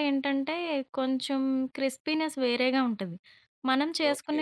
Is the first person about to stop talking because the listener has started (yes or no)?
no